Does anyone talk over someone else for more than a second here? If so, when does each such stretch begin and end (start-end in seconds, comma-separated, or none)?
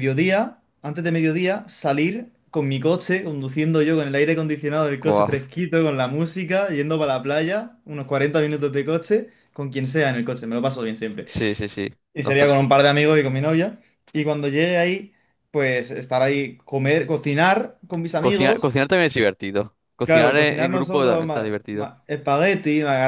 20.1-21.9